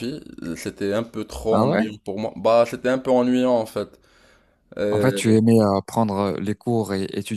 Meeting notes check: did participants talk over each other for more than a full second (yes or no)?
no